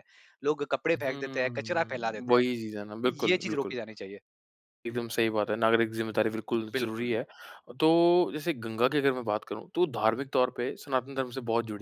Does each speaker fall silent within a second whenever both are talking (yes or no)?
no